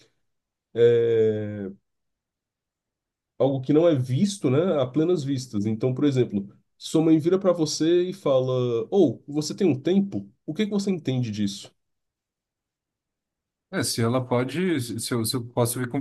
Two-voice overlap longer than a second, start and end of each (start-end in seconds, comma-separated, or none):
none